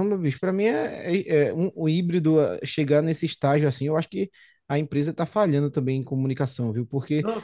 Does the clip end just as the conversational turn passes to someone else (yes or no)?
no